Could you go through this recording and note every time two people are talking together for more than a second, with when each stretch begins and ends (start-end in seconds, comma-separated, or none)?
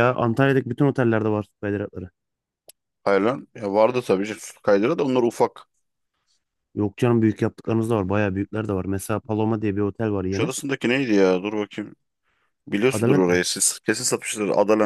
none